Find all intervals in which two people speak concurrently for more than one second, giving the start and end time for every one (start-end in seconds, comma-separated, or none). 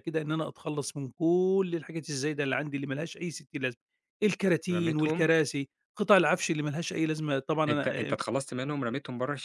none